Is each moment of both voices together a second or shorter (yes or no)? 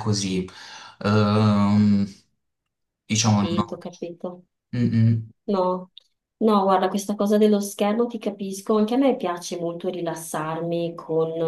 yes